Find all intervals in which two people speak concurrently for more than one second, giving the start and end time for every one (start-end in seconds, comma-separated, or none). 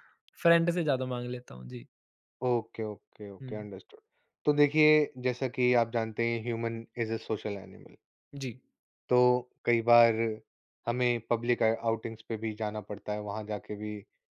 none